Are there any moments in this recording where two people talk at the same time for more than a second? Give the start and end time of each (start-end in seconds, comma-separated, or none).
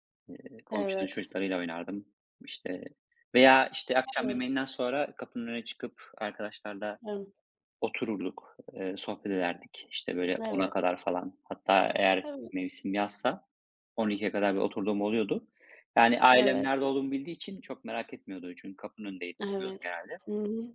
none